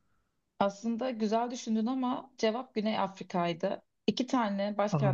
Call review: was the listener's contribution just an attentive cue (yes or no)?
yes